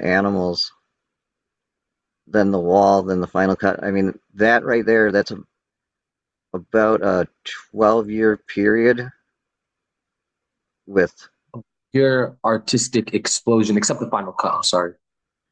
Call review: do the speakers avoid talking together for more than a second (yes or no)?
yes